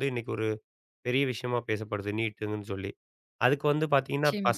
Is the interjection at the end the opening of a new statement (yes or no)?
no